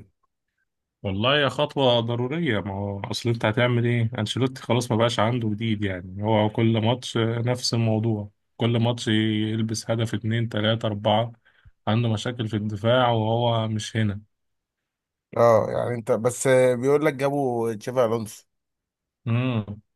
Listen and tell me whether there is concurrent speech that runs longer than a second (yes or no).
no